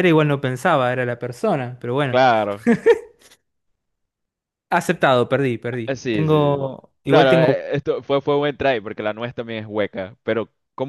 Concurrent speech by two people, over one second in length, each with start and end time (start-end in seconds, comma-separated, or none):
5.9-7.7